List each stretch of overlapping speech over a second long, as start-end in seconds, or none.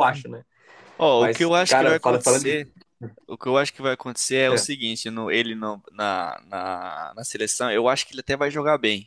1.2-2.6